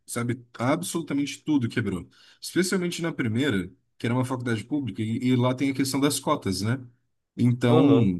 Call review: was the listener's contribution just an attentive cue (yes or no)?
yes